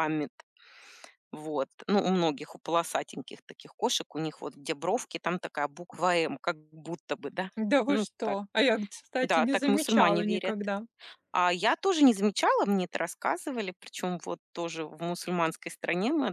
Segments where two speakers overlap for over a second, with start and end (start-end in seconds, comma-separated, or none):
9.2-10.6